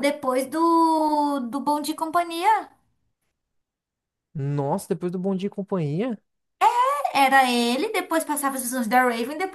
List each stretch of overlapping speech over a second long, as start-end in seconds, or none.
none